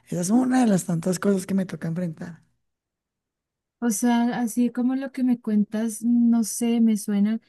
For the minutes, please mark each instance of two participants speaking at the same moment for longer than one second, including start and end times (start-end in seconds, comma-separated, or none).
none